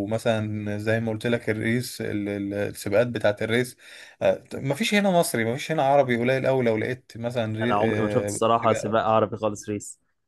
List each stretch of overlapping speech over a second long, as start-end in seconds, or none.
7.6-9.0